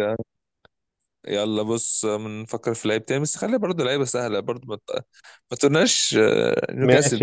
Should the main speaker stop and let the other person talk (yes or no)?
yes